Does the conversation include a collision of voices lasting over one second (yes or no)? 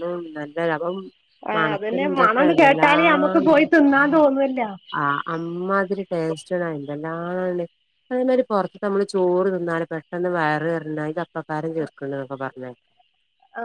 yes